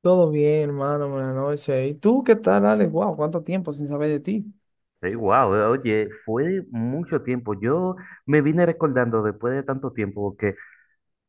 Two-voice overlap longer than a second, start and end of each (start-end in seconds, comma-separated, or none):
none